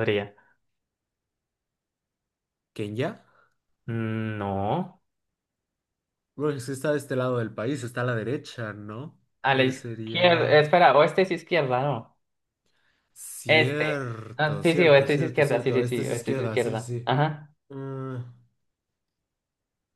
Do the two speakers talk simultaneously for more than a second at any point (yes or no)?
yes